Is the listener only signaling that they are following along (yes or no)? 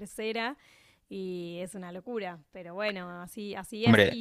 yes